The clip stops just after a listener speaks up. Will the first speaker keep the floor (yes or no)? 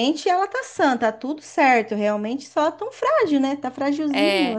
no